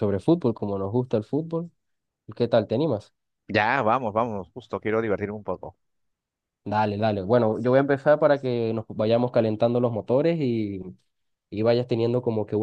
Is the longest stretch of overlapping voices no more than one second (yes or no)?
yes